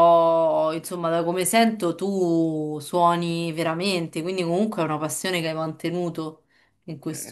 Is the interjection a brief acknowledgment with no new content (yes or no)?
no